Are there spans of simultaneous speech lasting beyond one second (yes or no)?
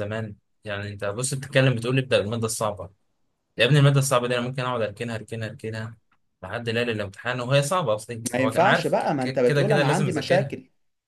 yes